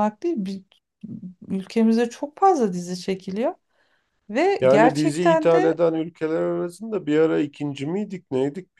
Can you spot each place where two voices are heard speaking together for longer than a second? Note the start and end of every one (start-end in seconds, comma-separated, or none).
4.6-5.8